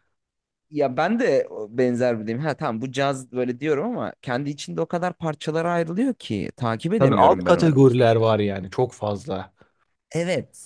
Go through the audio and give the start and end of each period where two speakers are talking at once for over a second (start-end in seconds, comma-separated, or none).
7.0-8.3